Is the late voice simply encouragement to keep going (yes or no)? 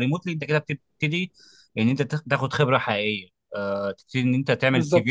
yes